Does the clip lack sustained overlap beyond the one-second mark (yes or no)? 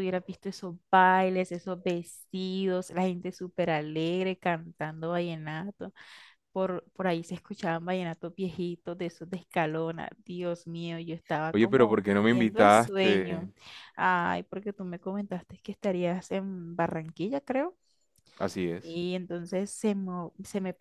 no